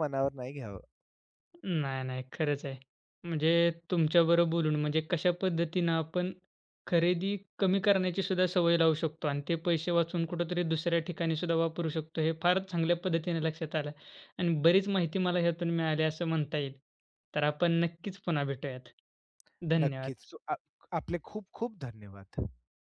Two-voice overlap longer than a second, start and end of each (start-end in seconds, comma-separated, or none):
none